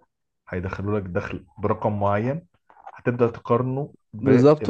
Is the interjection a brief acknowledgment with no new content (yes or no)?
no